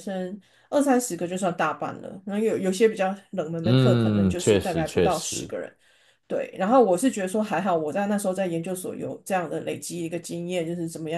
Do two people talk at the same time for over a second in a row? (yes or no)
yes